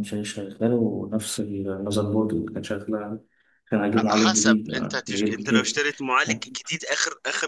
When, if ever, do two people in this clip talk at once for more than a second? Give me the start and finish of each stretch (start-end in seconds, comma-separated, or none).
4.0-5.8